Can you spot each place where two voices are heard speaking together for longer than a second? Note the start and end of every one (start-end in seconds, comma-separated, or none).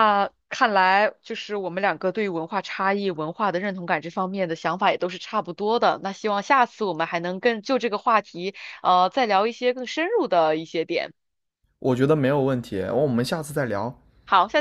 none